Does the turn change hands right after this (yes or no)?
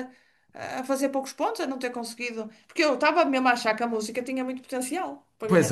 yes